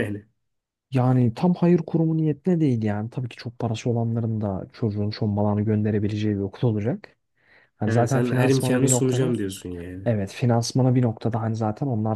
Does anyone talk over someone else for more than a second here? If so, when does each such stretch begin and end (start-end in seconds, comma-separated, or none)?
7.8-9.3